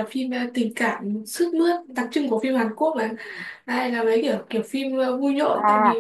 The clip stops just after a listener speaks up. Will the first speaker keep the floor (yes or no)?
no